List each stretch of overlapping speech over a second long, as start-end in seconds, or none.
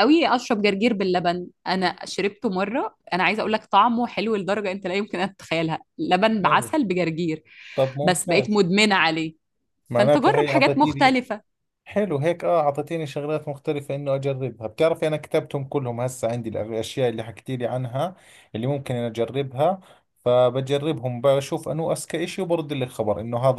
10.0-11.2